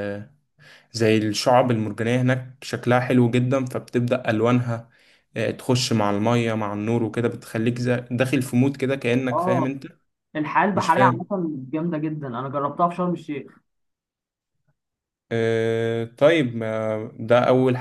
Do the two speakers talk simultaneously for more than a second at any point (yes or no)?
no